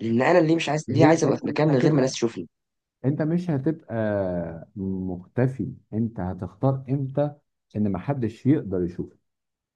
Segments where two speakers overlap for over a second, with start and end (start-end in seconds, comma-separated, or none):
0.9-2.2